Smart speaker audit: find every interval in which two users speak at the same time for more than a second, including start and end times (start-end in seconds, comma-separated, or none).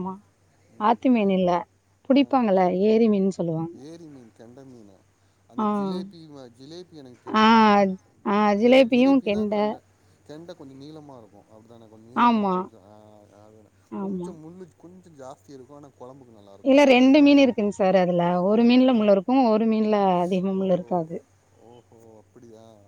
none